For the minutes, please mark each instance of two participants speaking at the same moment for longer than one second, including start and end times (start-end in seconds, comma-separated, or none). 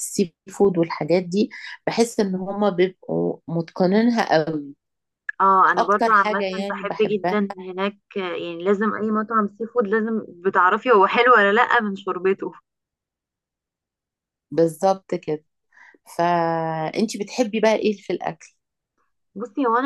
5.8-7.4